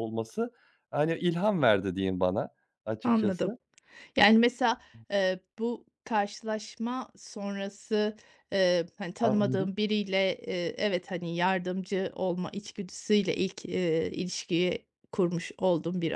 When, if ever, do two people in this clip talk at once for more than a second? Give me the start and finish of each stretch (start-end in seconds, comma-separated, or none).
none